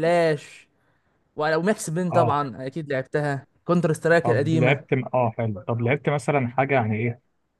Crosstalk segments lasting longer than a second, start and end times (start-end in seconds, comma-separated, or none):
none